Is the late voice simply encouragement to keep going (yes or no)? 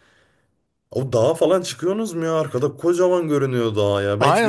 no